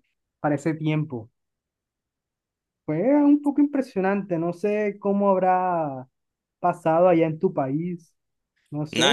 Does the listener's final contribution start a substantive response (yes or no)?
yes